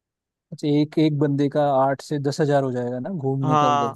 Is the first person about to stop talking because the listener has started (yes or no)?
yes